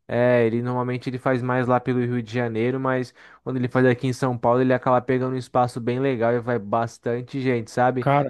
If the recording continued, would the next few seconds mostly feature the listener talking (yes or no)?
no